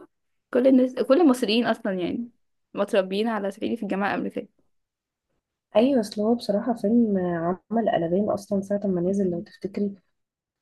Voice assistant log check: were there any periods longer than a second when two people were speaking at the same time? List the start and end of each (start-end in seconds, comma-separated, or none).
none